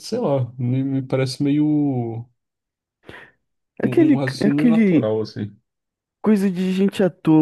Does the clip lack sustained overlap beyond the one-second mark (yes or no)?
no